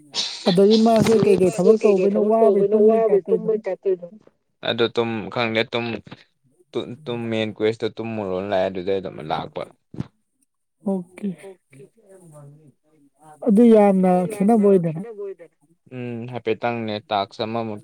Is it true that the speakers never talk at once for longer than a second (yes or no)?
no